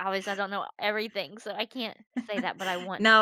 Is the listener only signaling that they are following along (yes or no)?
no